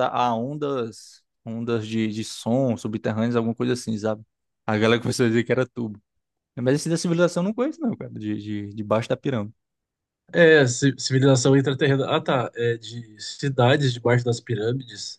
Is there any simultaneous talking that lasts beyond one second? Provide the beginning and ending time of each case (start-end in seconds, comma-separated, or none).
none